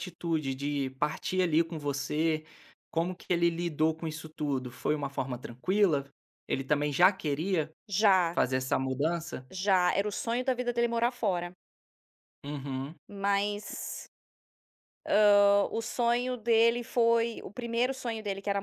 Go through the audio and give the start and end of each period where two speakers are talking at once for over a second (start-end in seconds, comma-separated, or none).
none